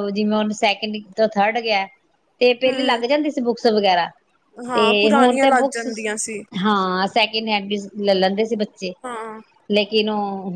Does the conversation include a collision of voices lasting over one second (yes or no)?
yes